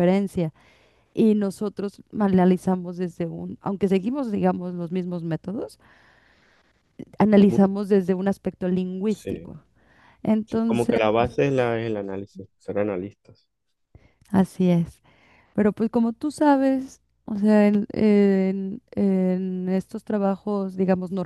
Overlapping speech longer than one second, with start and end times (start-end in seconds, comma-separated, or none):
none